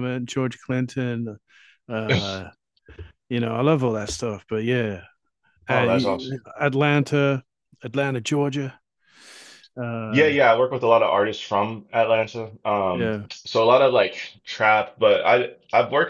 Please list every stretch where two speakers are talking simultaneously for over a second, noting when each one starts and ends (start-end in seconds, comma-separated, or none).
none